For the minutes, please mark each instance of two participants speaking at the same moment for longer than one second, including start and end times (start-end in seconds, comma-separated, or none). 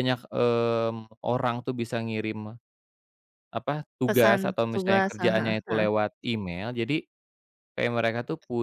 4.1-5.9